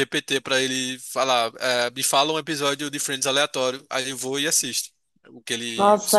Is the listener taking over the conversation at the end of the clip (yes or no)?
yes